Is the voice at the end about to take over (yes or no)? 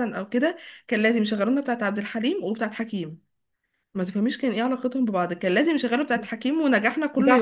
yes